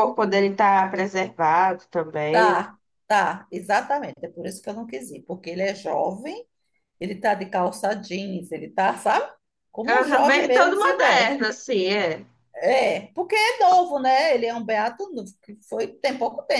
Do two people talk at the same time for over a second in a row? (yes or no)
yes